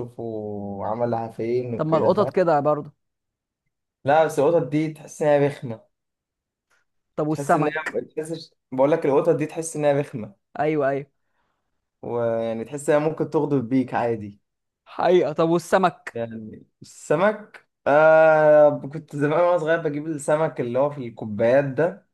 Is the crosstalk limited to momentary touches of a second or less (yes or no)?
yes